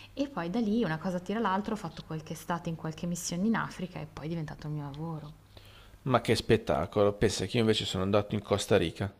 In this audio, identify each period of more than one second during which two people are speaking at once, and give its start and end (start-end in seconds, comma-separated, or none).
none